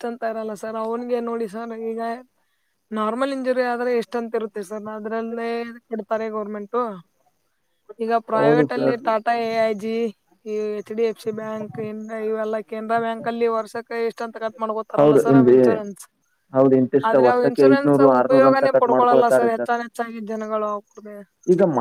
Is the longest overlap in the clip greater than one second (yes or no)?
yes